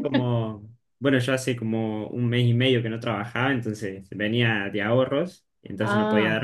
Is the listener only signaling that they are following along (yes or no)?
yes